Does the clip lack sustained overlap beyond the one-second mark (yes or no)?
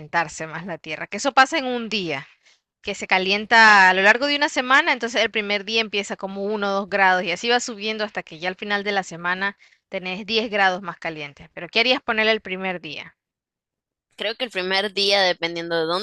yes